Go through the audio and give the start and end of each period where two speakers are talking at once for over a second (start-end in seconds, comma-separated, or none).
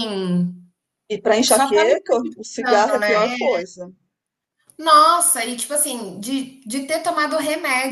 1.4-3.2